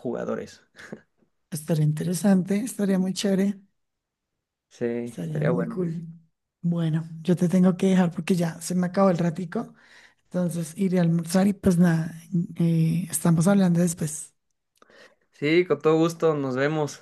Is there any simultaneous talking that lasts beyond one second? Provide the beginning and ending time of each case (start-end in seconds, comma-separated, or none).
none